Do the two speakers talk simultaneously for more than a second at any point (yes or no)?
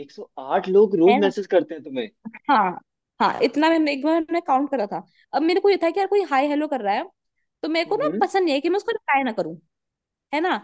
no